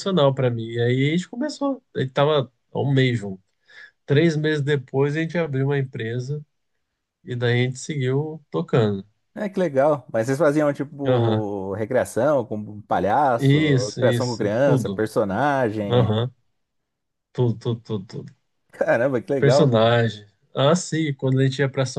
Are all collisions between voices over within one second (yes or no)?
no